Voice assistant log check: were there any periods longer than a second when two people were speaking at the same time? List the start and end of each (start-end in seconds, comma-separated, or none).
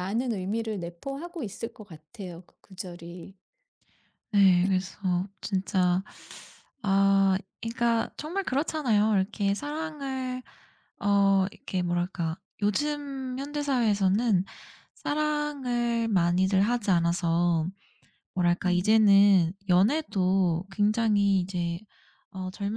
none